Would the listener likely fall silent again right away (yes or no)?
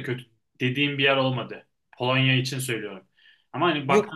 no